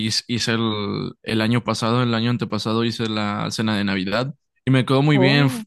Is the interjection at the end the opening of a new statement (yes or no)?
no